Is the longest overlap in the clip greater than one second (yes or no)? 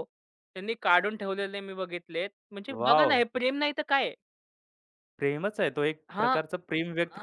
no